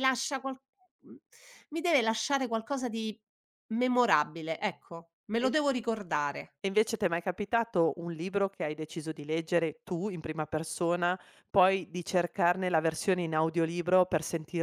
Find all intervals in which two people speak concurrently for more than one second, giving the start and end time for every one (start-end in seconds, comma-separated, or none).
none